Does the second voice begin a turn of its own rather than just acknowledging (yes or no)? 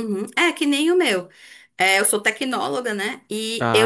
no